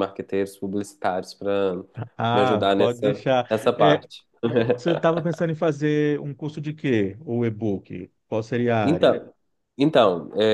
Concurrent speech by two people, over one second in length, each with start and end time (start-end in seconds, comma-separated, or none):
2.3-4.0